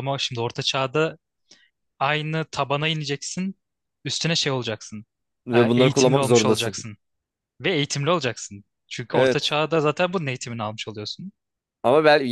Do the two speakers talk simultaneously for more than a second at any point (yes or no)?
yes